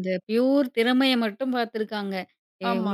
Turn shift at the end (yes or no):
no